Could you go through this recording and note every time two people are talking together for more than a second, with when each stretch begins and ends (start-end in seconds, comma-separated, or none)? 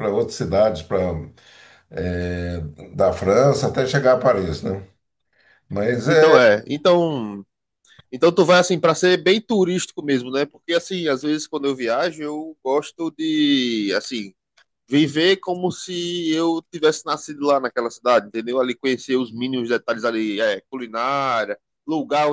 none